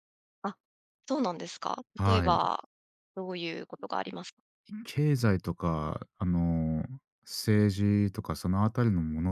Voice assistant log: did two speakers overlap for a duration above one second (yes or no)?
no